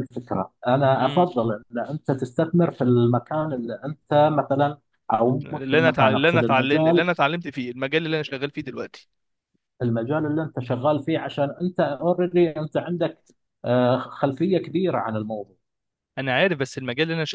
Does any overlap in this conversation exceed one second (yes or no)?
yes